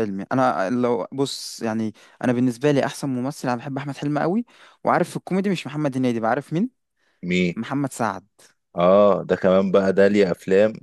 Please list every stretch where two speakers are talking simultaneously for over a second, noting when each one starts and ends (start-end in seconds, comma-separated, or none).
none